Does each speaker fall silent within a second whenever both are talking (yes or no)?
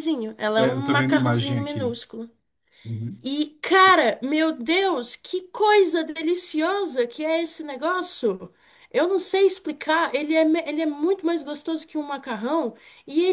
no